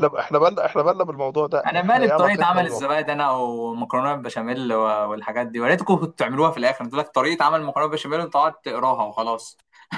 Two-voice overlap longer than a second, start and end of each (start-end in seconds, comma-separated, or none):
1.7-2.9